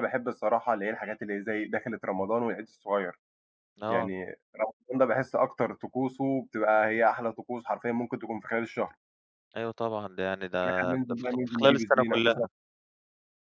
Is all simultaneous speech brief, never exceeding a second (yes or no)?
no